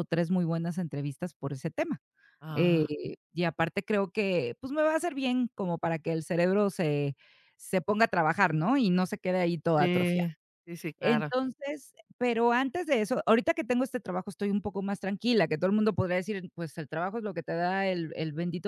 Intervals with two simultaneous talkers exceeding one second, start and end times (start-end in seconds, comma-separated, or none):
none